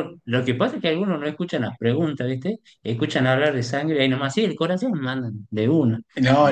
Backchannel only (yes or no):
no